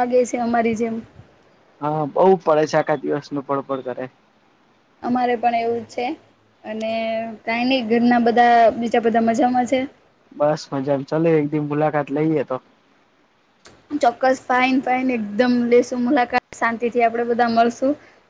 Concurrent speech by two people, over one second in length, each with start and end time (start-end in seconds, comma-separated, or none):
none